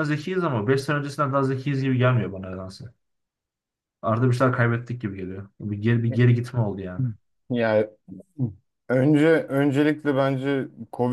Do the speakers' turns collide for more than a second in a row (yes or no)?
no